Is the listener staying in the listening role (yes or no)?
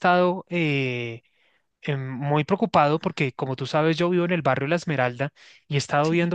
yes